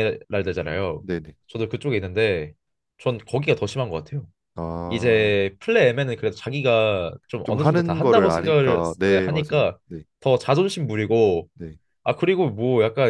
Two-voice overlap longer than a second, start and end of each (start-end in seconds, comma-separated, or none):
7.4-9.8